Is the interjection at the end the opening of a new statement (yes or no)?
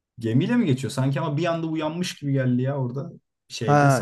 yes